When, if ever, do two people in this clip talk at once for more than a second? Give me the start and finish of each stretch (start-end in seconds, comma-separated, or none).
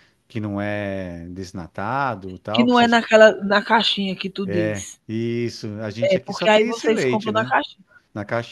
6.1-7.5